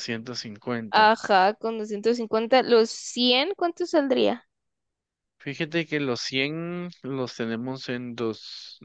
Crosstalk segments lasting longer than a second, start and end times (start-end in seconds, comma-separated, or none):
none